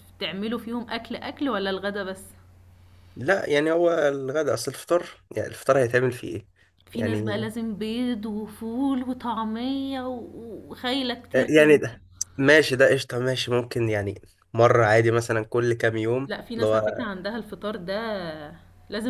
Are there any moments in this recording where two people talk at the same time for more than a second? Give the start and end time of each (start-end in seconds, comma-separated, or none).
none